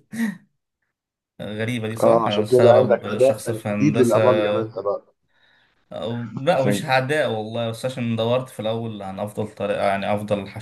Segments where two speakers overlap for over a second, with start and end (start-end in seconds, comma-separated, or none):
2.0-4.2